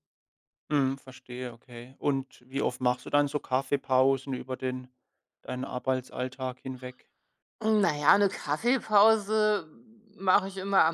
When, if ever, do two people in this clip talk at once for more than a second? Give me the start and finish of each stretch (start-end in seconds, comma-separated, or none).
none